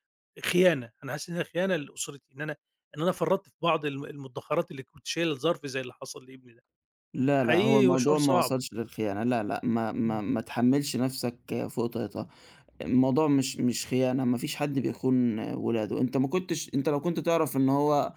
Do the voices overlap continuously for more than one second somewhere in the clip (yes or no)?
yes